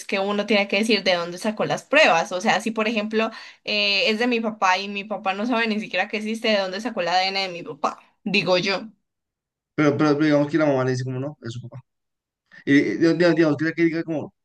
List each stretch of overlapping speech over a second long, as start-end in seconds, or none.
none